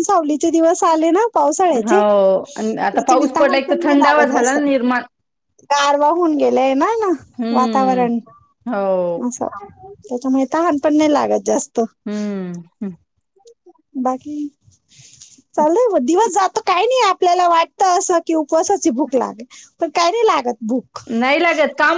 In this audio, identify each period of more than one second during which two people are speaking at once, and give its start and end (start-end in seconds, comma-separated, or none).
1.7-4.5